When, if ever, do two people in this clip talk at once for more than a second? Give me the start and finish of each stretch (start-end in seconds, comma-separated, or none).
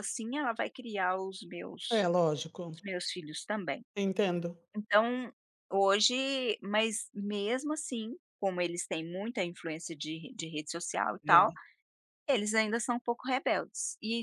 none